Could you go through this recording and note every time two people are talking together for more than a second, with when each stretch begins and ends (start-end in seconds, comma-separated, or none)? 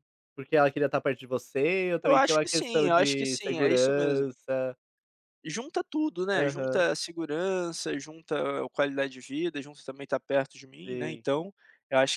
2.0-4.3